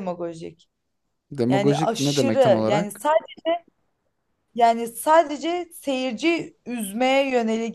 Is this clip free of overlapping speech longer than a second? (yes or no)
no